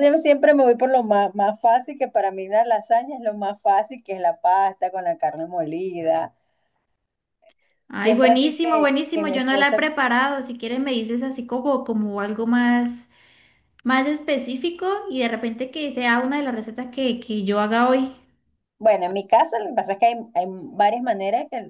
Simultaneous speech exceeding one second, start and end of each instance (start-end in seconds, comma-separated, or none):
8.0-9.8